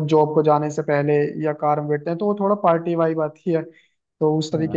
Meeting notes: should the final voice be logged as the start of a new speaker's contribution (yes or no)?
yes